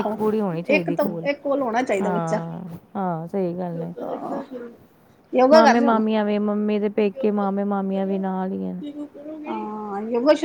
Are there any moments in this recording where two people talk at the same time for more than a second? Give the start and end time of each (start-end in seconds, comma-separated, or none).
none